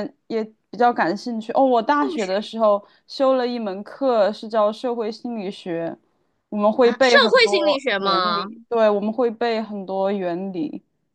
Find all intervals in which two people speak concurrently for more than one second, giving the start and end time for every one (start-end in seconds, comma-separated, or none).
6.8-8.5